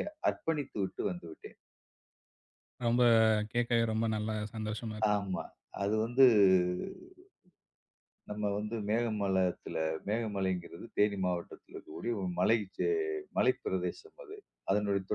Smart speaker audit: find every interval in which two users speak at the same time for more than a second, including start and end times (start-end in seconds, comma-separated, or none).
none